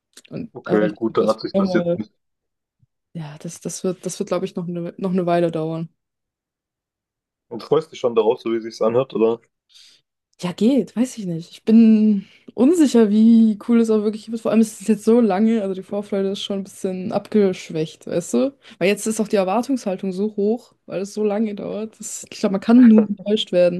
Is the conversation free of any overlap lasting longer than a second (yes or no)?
no